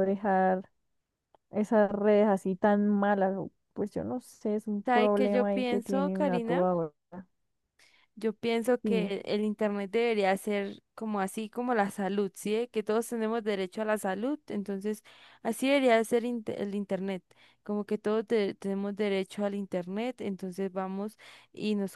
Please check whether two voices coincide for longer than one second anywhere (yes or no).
yes